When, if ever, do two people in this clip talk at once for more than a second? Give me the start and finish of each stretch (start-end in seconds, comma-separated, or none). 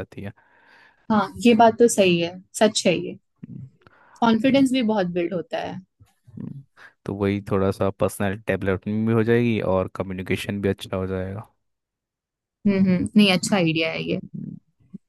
none